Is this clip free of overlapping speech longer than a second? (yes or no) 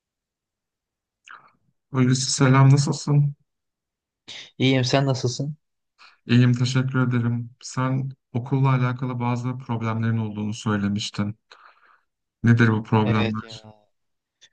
yes